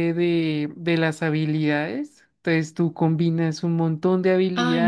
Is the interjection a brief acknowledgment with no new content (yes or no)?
no